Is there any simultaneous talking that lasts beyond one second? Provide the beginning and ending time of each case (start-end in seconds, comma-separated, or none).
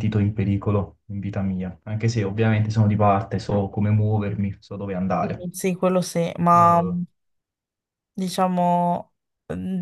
none